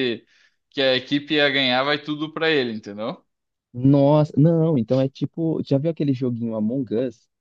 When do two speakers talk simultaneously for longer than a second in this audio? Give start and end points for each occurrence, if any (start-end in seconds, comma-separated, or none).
none